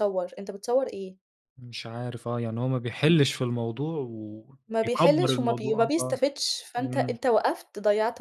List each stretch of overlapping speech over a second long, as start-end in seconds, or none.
4.7-6.1